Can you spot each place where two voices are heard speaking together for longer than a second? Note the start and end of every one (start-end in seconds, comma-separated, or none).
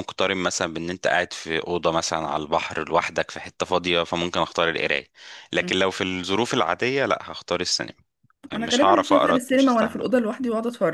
8.5-10.0